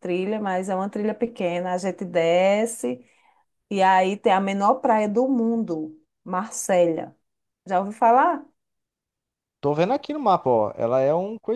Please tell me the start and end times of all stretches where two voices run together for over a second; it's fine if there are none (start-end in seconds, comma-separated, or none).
none